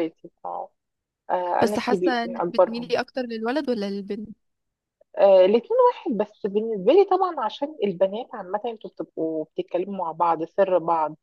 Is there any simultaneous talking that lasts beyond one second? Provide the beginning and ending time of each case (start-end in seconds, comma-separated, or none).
1.6-2.9